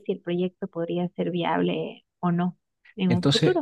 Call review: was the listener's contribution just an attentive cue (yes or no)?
no